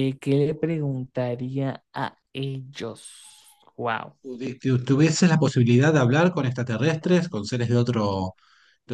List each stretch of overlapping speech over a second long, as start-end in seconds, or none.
none